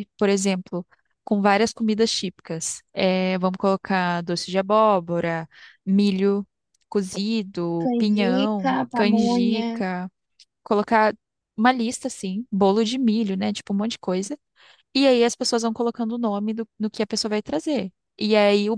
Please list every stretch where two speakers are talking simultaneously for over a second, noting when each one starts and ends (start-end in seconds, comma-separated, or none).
7.8-9.7